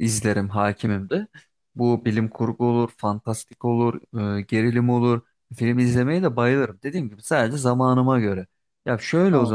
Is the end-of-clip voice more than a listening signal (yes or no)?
no